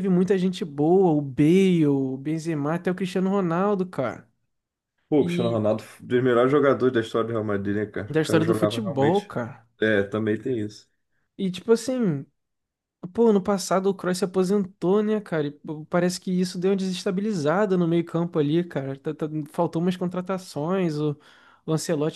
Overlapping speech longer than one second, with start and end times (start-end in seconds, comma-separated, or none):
8.1-9.3